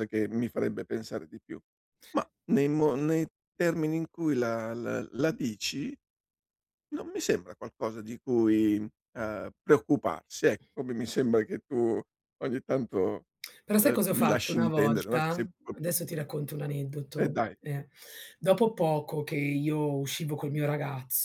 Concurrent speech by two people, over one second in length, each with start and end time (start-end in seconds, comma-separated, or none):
13.8-16.2